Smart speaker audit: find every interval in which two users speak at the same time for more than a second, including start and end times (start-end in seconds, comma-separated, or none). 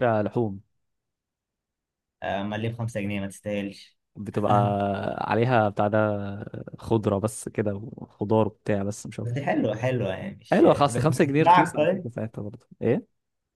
10.5-12.1